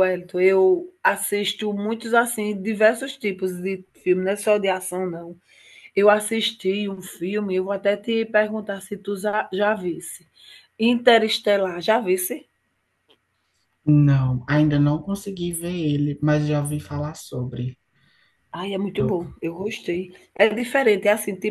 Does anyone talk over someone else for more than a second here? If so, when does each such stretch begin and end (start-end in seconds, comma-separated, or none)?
none